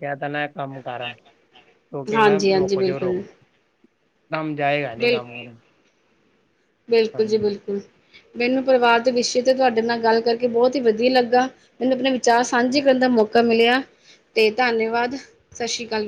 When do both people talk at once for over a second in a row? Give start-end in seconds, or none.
2.0-3.2